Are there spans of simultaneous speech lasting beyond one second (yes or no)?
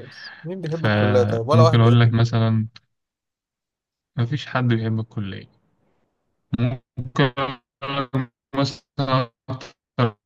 yes